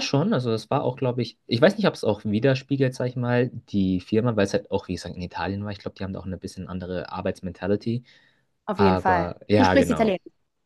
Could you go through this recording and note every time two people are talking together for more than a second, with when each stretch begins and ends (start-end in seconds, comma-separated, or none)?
8.8-10.2